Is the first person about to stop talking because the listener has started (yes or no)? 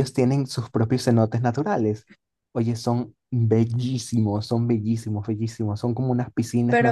no